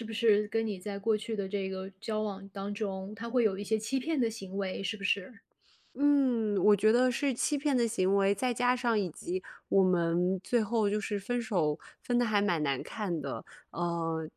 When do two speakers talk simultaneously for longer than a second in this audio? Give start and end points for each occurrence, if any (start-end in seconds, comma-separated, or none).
none